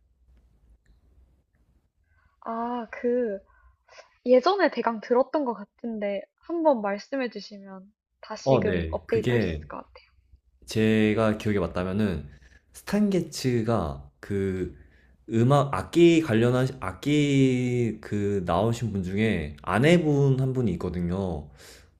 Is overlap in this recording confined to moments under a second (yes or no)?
no